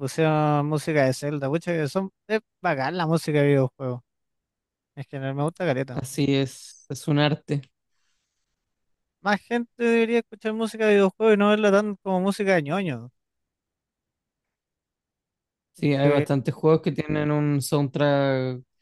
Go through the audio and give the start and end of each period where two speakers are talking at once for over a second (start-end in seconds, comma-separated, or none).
none